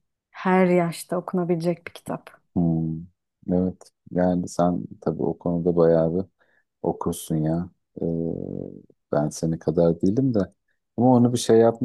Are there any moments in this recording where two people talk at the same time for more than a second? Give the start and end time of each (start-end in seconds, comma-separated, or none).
none